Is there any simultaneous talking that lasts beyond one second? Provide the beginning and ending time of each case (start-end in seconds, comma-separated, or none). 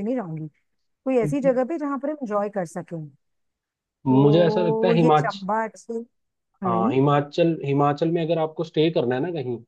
4.1-5.4